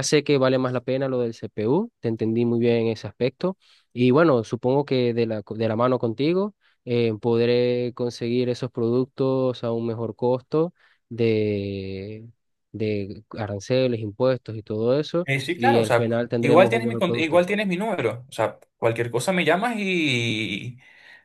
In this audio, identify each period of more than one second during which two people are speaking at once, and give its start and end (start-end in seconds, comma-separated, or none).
15.2-17.4